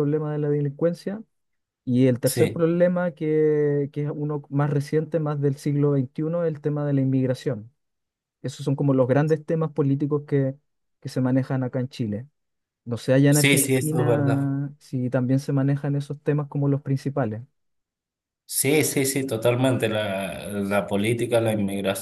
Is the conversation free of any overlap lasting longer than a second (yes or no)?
no